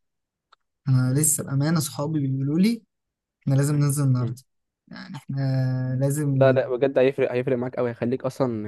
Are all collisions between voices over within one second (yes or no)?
yes